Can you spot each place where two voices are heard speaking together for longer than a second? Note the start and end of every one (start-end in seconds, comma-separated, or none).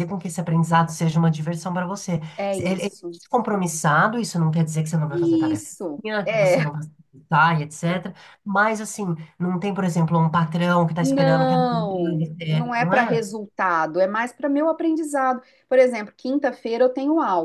5.1-6.7